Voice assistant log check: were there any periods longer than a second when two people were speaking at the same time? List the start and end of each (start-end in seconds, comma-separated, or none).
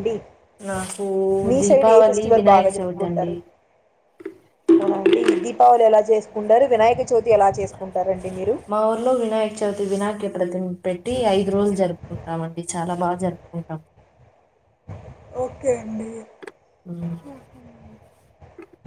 1.6-3.3